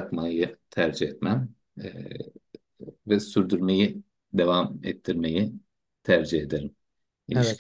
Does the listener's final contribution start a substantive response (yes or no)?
yes